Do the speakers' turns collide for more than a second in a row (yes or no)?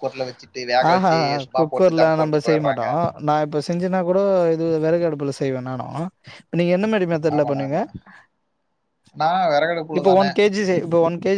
yes